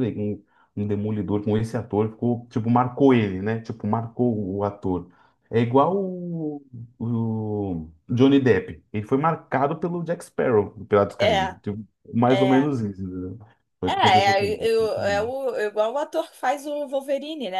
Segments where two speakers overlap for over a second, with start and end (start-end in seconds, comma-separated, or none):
13.9-15.3